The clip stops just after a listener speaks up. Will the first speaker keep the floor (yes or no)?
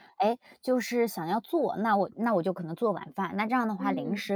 yes